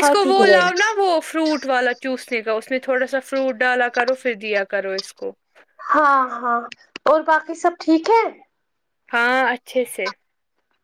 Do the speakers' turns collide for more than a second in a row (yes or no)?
no